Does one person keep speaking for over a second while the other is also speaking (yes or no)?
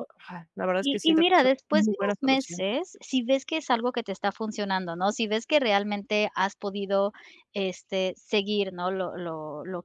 yes